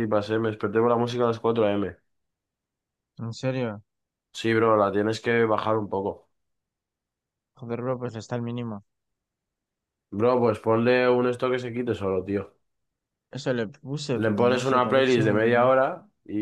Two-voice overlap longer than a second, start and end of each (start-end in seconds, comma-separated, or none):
14.2-15.7